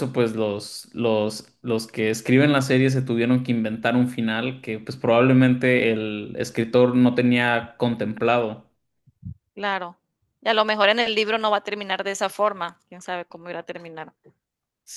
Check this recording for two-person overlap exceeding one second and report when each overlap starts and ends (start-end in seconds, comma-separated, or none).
none